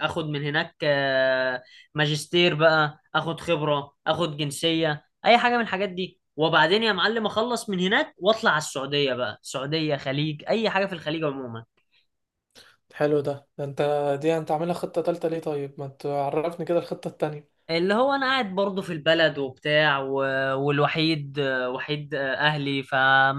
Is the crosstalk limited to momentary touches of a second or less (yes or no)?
yes